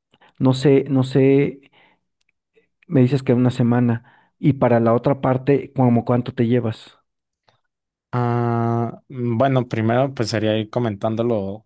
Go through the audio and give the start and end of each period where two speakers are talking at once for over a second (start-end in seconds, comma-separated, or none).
none